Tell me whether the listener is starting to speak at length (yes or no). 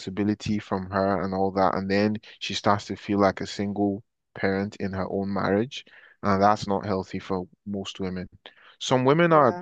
no